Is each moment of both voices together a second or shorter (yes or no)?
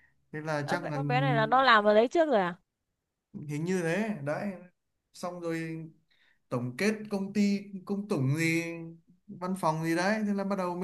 yes